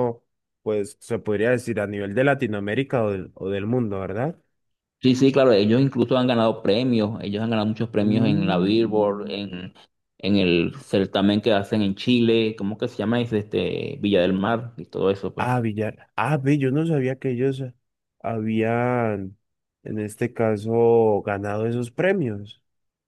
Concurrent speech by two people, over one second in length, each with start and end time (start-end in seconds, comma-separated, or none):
8.0-9.3